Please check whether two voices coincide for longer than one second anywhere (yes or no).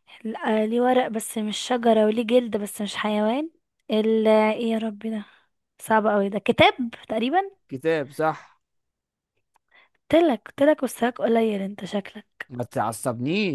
no